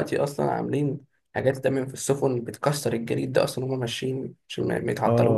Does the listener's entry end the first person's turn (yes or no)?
yes